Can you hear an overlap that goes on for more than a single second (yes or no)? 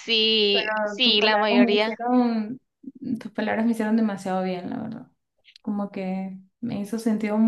yes